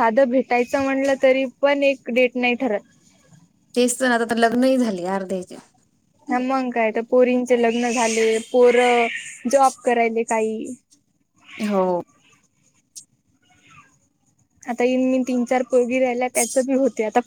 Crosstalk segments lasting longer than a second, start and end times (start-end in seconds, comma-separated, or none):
none